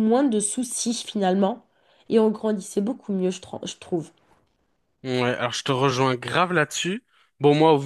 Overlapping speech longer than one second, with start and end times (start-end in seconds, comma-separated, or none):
none